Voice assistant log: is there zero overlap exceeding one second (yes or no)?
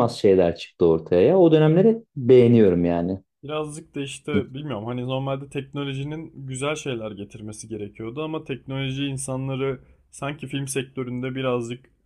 yes